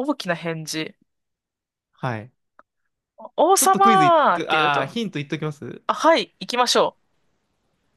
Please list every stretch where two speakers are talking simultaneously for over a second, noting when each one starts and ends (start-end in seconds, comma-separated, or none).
3.5-5.0